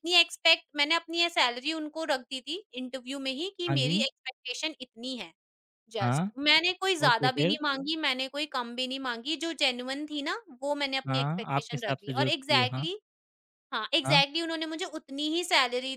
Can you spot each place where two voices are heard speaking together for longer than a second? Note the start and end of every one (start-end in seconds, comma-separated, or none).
11.1-12.9